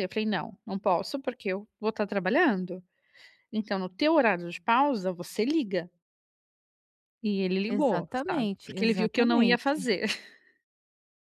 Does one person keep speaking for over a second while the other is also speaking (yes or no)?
yes